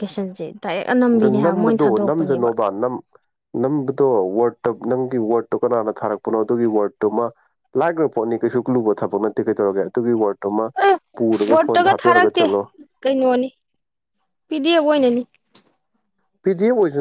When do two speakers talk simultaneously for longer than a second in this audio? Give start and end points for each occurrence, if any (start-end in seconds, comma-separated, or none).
1.1-2.5